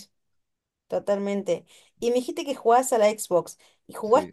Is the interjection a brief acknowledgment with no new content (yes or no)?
yes